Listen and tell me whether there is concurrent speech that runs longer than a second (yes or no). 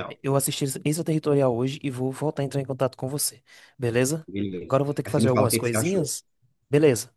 yes